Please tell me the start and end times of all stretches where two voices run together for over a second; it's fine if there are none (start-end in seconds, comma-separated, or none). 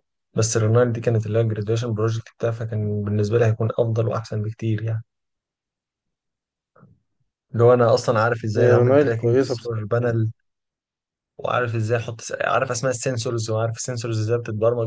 8.6-10.1